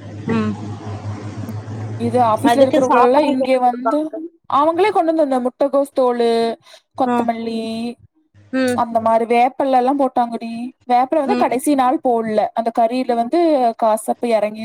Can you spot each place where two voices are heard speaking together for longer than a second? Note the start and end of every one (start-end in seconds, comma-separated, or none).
2.5-4.0